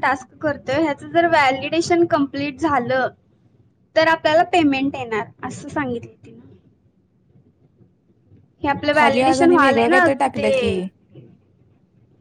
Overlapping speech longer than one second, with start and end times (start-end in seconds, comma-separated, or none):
9.0-10.7